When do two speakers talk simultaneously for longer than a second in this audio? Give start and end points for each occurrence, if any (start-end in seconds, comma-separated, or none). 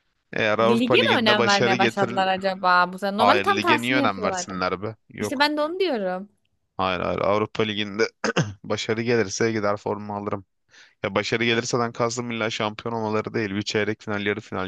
0.6-2.2, 3.2-4.5